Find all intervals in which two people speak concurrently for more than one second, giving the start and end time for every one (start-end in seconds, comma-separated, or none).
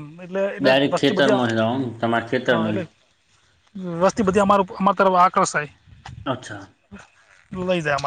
0.6-2.8